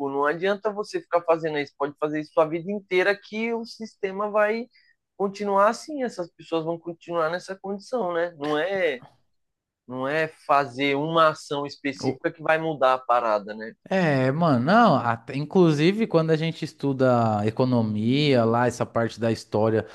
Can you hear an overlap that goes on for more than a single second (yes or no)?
no